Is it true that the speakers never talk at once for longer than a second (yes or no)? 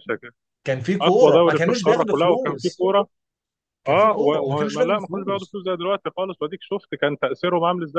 no